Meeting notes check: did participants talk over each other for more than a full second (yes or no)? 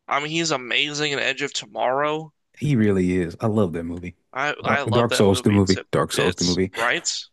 yes